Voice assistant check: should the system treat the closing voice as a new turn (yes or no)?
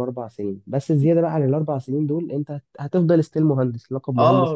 yes